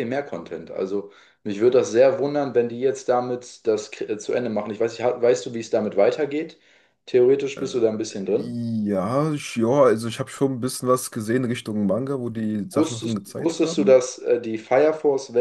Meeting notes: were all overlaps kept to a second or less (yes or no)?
no